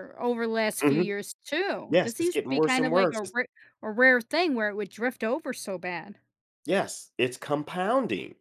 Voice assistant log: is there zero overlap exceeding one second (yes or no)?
no